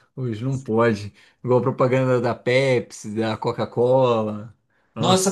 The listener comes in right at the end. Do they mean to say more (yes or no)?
yes